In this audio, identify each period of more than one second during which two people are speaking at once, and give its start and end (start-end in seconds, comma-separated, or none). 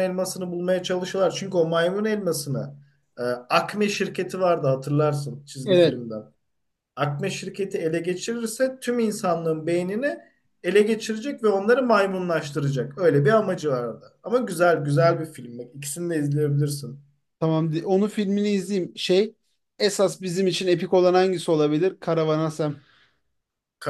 none